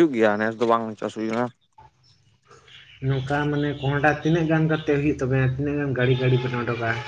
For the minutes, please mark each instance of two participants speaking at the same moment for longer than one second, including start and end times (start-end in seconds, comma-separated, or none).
none